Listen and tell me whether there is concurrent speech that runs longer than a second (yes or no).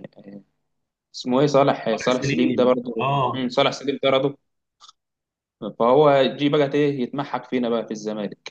yes